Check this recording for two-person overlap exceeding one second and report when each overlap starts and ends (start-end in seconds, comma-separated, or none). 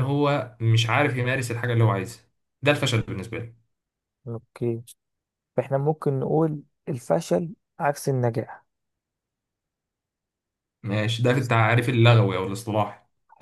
none